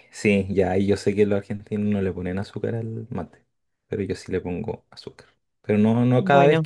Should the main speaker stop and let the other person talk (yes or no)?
no